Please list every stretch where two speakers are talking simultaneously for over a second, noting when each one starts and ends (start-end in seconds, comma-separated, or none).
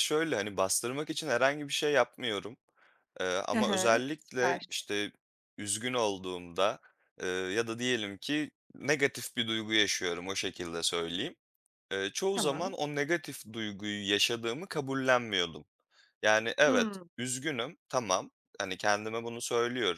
3.5-4.9